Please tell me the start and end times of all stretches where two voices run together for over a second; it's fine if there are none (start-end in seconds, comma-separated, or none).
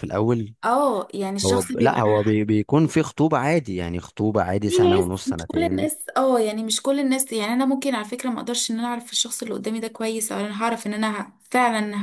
4.7-5.9